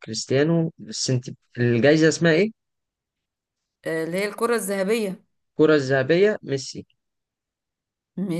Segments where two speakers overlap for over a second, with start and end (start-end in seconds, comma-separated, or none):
none